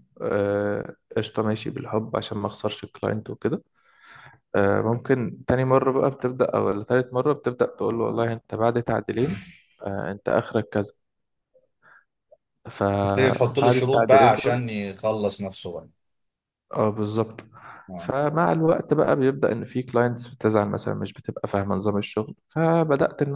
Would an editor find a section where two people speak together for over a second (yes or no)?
yes